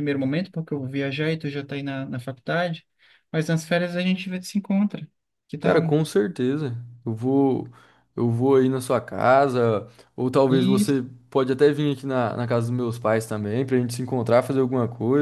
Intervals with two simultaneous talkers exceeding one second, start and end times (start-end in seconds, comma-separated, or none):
none